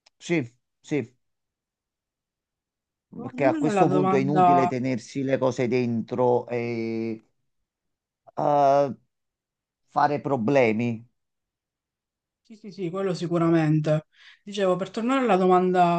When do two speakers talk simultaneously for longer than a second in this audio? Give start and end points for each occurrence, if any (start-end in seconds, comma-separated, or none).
3.2-4.7